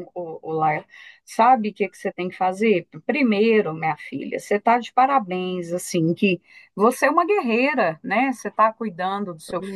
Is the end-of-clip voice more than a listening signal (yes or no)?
no